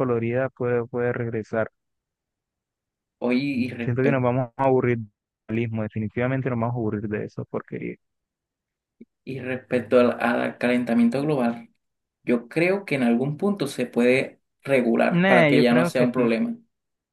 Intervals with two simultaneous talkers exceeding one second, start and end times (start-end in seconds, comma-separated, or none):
15.1-16.3